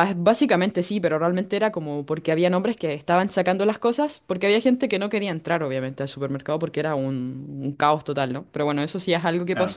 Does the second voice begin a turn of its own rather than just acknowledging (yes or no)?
no